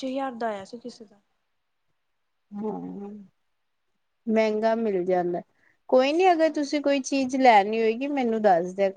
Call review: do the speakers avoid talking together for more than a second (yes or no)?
yes